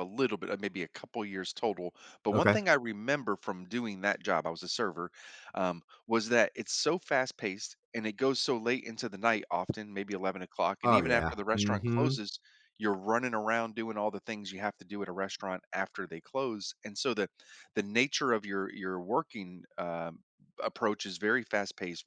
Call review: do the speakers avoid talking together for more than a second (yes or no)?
no